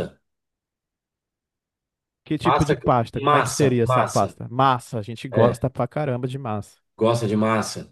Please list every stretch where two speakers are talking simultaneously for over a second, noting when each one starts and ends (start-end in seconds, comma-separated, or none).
2.4-4.4